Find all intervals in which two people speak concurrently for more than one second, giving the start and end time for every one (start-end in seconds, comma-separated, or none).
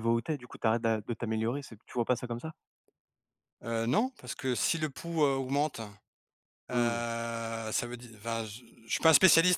none